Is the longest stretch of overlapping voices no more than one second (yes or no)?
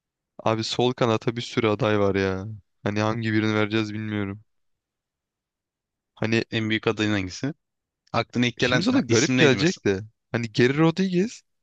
no